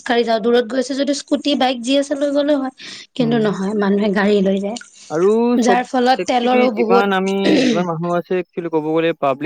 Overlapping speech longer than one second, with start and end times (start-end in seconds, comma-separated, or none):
5.7-7.0